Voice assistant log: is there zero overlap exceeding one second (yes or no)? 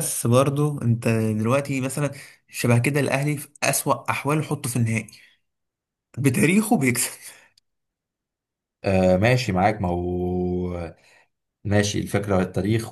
yes